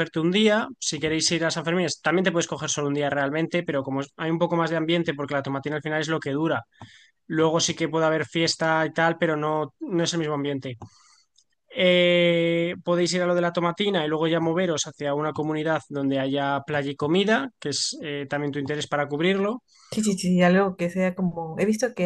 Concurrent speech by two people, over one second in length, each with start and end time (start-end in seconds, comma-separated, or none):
none